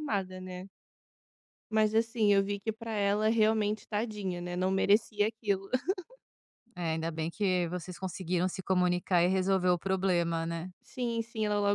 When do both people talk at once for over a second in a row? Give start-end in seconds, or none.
none